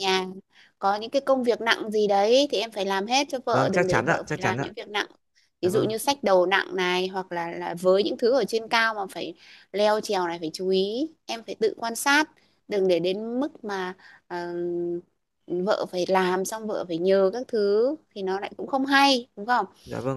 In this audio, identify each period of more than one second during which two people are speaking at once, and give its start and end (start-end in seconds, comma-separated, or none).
3.5-4.7